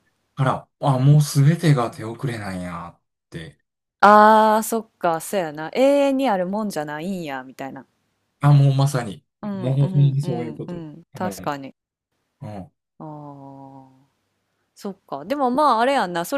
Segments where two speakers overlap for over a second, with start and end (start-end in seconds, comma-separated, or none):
9.4-11.5